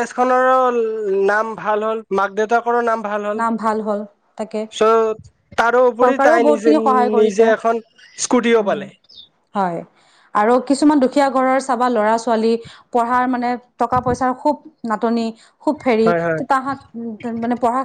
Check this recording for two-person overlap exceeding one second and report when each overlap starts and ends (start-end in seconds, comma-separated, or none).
6.0-7.4